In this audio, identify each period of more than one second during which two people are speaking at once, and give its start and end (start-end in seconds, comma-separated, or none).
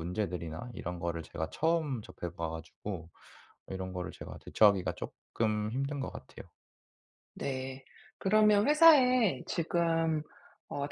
none